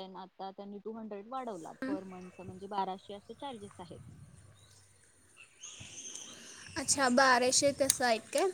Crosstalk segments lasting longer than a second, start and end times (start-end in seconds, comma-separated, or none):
none